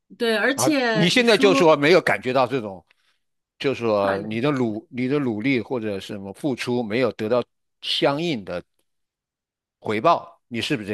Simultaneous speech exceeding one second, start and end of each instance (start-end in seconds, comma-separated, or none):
0.5-1.8